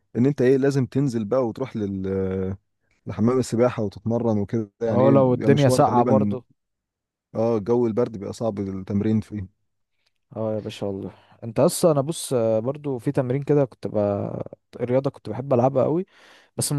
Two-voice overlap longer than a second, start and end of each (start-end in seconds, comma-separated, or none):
4.9-6.4